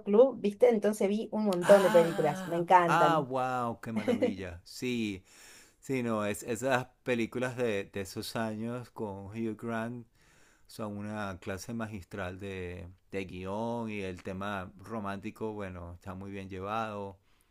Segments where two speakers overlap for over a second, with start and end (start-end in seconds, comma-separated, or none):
1.6-3.3